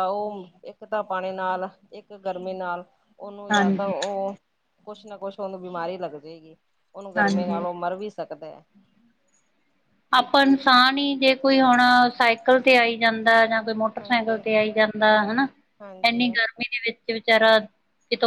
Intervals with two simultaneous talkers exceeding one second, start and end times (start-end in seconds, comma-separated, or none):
none